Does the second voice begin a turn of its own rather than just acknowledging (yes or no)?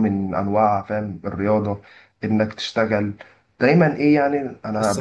yes